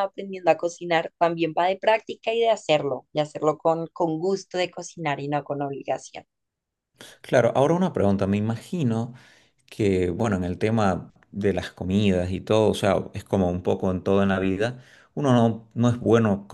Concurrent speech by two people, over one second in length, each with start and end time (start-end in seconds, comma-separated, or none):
none